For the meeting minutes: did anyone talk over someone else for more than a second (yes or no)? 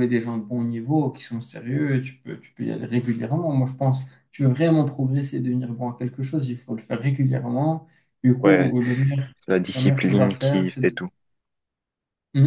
yes